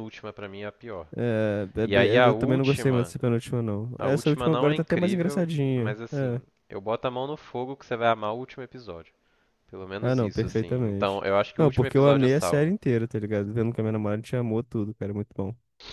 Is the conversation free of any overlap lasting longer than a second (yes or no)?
no